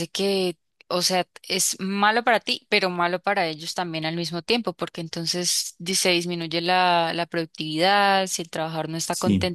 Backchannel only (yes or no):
yes